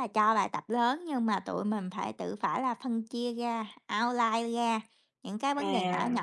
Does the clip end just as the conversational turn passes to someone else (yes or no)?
no